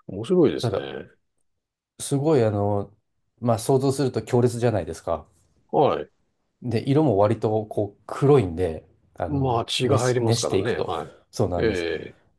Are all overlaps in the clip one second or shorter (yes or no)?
no